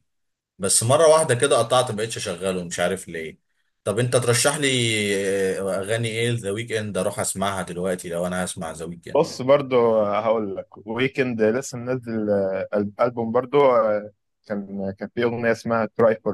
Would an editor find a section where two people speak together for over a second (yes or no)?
no